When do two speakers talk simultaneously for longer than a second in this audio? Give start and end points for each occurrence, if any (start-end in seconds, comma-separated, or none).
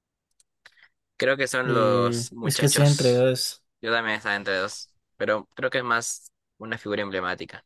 1.6-3.3